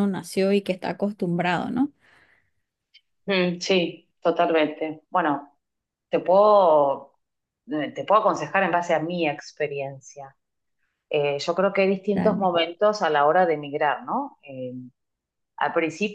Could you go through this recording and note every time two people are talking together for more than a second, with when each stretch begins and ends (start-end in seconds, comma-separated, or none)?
none